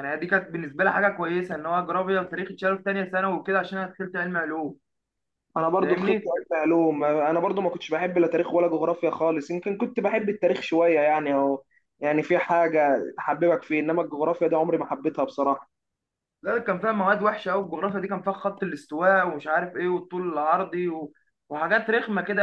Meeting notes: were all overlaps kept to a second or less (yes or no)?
yes